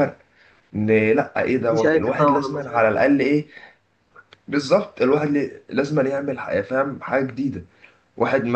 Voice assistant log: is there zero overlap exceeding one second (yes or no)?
no